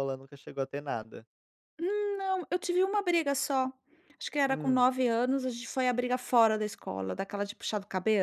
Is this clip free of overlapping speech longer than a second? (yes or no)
yes